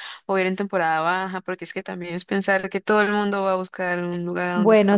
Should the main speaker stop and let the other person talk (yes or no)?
yes